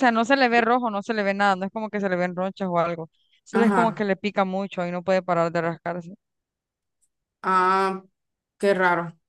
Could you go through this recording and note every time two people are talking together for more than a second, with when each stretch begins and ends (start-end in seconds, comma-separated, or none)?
none